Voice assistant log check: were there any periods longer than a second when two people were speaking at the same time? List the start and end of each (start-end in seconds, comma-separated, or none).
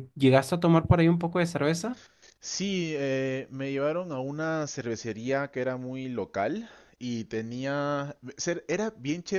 none